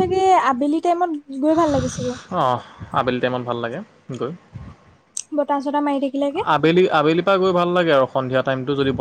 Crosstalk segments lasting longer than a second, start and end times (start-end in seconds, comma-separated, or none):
none